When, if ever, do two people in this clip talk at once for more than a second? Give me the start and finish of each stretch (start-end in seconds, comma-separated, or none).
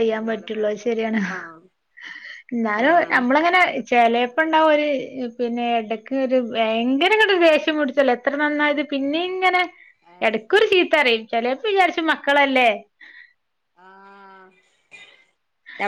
none